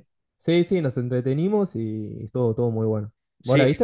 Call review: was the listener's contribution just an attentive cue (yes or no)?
no